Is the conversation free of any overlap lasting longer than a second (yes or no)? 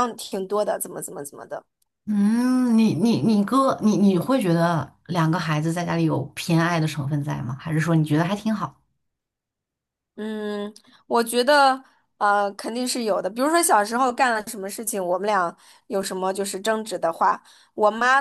yes